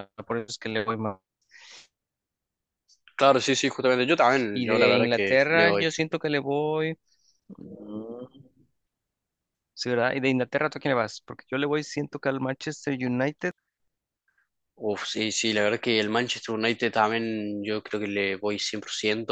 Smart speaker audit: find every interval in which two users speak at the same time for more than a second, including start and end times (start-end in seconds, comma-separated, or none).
4.5-5.9